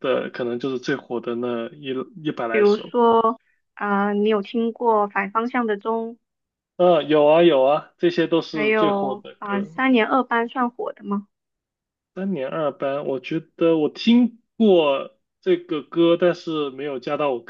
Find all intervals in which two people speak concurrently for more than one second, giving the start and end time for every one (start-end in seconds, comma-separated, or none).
8.5-9.8